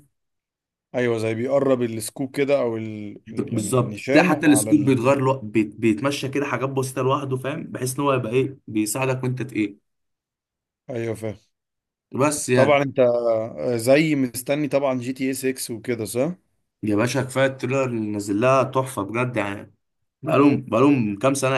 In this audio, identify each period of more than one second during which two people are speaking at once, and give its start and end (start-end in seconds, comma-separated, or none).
3.3-5.2